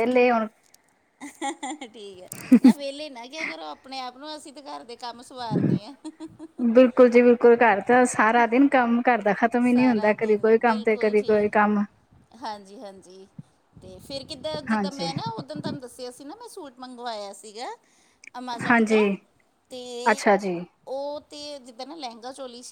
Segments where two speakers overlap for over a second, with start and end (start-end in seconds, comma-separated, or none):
9.7-11.5